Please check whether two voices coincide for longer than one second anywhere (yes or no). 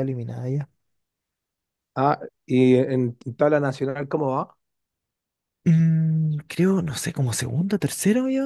no